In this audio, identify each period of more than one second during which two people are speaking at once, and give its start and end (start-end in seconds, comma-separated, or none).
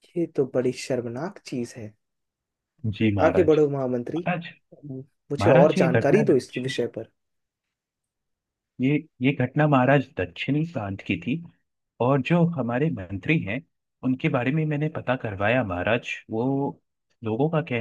5.4-6.8